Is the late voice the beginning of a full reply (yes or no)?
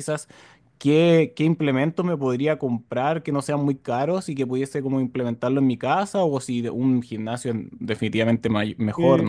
yes